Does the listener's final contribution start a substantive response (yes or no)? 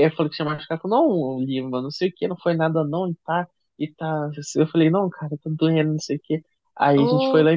no